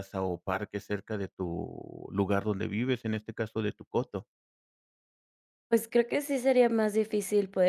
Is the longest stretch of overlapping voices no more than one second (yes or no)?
yes